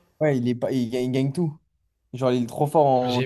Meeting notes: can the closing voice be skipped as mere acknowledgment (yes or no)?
no